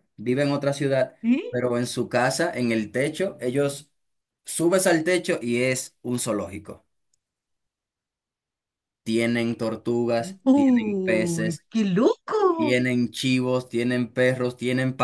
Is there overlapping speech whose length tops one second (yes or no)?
yes